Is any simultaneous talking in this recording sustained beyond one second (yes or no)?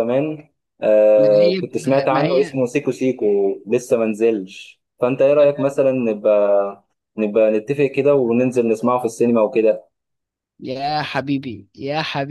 yes